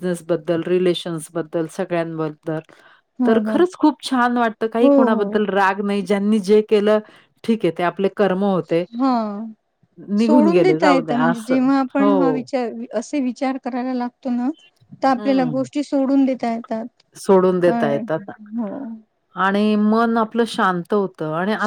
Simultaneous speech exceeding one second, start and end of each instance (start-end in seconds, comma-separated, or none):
10.2-12.4